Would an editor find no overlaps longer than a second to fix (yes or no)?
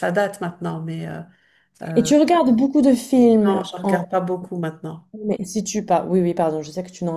yes